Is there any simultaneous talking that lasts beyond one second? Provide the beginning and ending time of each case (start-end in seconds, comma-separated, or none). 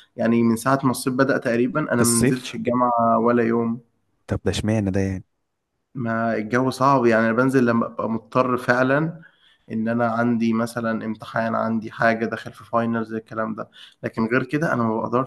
none